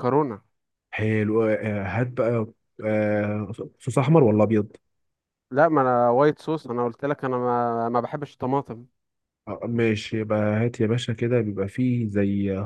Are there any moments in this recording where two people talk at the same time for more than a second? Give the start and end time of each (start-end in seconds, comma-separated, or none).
none